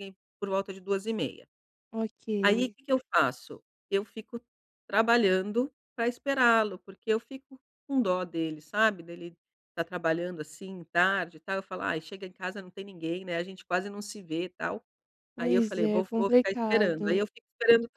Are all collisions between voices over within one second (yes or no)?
no